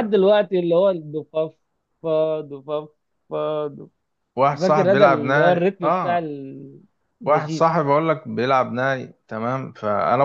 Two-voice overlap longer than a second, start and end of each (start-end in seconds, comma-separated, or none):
4.6-6.3